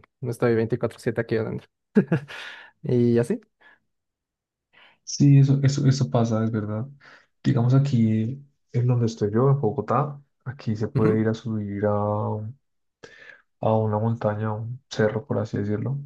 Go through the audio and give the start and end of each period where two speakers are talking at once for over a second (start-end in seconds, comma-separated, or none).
none